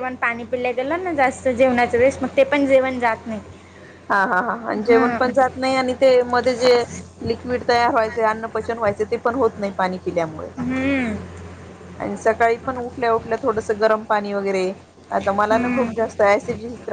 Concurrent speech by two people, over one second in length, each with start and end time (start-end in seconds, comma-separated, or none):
none